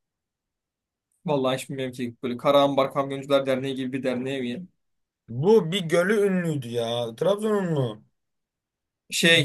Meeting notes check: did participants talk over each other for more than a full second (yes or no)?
no